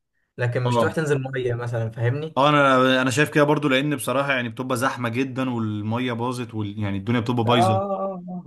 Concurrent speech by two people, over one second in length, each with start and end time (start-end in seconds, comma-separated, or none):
none